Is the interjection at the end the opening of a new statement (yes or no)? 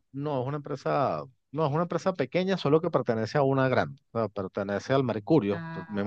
no